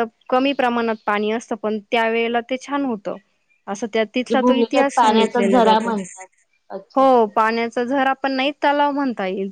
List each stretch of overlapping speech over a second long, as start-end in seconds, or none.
4.3-5.9